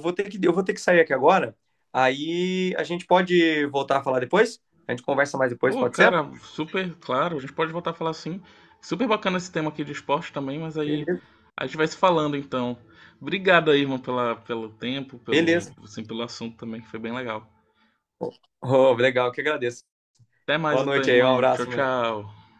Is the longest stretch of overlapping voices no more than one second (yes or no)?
no